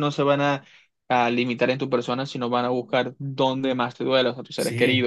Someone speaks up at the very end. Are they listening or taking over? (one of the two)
taking over